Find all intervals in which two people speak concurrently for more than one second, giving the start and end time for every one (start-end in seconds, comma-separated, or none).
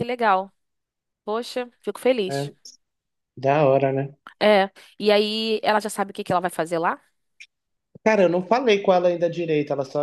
none